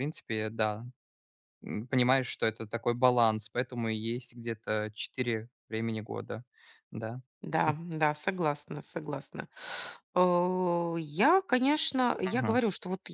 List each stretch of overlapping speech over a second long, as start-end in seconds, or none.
none